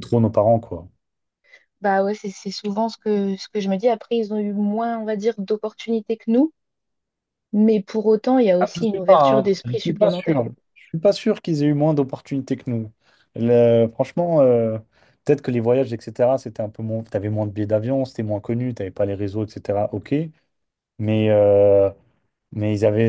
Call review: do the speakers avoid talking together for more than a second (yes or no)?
no